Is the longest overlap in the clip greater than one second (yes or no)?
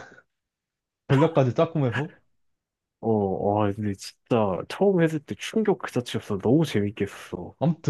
no